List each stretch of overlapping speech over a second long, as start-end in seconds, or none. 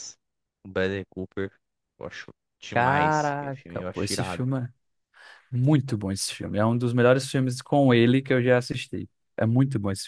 2.7-4.4